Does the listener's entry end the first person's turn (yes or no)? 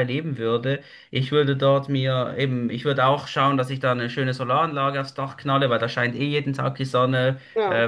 no